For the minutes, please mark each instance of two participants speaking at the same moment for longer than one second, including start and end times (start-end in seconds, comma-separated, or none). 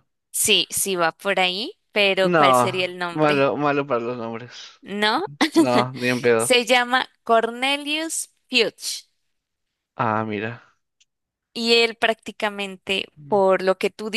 2.2-3.5